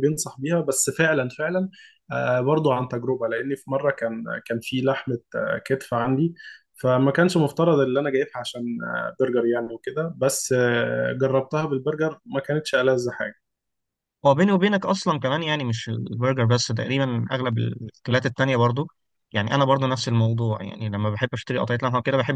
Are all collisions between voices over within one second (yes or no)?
yes